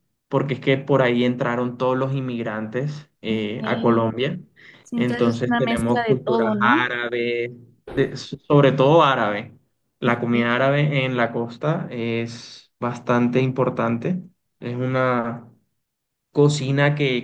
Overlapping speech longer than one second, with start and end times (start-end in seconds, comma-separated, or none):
5.0-6.8